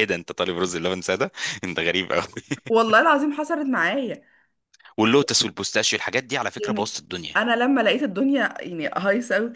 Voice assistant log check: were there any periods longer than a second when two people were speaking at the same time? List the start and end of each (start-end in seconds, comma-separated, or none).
none